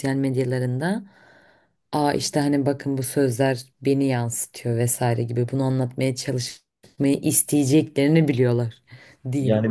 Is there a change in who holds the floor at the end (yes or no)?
yes